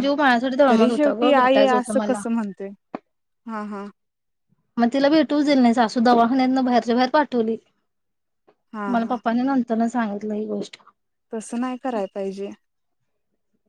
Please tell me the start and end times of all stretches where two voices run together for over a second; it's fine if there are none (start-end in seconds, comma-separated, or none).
0.7-2.2